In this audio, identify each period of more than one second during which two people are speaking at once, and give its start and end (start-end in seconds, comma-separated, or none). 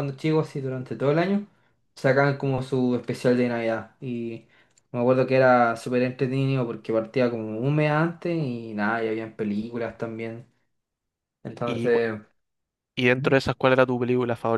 none